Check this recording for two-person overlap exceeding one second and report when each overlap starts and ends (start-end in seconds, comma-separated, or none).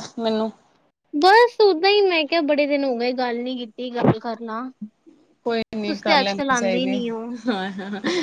none